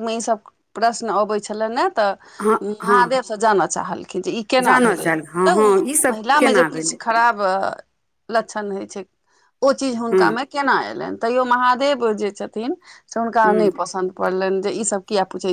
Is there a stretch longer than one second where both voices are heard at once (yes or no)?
yes